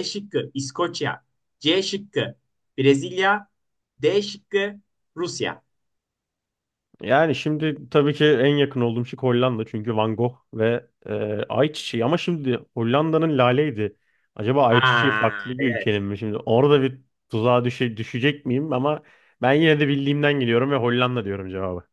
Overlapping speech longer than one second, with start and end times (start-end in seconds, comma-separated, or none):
14.7-16.0